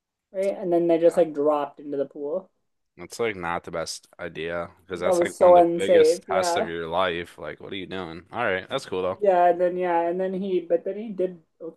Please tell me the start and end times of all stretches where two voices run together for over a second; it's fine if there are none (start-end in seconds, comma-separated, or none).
5.0-6.7